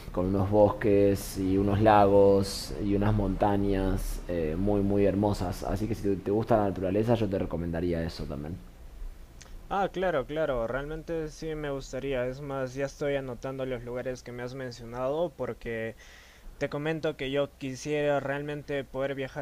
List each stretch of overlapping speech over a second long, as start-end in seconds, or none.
none